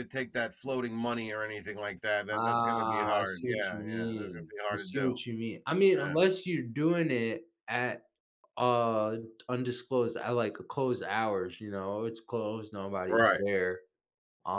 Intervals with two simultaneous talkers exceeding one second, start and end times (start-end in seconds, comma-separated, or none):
2.3-5.1